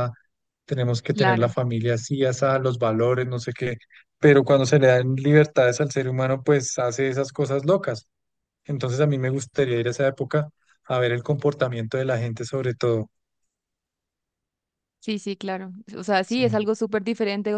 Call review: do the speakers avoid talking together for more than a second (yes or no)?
yes